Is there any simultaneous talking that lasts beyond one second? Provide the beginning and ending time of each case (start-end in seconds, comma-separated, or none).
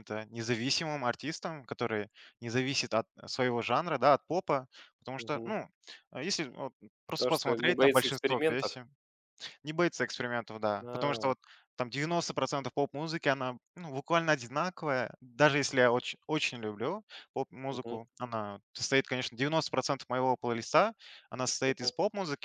7.2-8.8